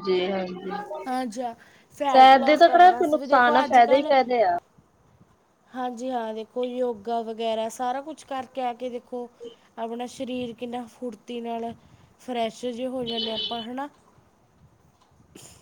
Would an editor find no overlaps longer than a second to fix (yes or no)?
no